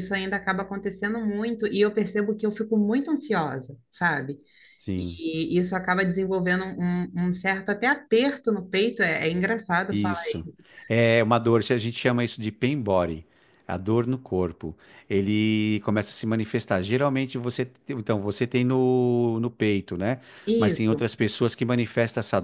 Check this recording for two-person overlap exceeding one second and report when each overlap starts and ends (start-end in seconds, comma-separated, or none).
none